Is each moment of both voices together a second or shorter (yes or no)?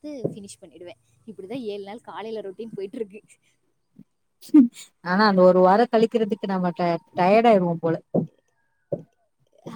yes